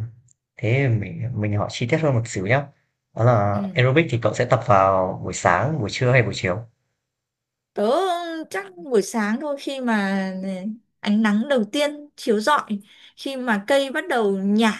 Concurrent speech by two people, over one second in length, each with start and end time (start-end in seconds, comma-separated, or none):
none